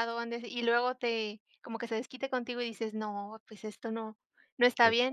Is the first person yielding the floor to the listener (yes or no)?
no